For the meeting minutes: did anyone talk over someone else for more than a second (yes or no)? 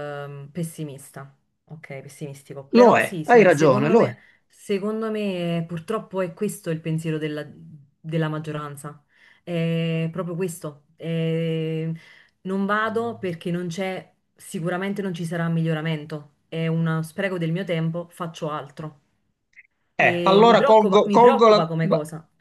yes